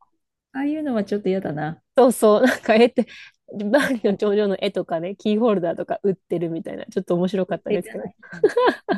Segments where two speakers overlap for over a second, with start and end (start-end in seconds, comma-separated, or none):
none